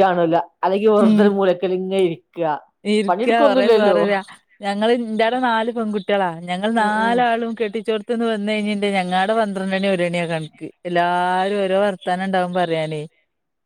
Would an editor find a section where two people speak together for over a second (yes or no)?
no